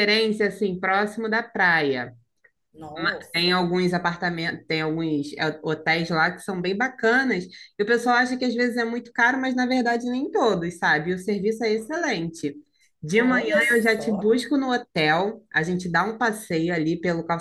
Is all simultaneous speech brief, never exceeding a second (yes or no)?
no